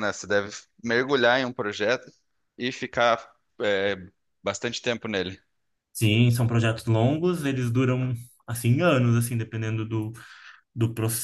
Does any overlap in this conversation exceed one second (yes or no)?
no